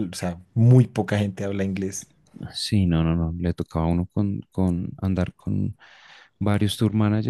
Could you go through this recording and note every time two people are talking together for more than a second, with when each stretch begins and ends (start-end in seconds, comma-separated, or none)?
none